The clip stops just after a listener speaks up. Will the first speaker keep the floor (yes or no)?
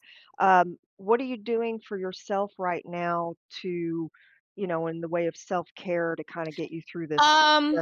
no